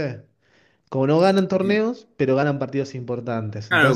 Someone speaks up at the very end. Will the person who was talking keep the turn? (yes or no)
no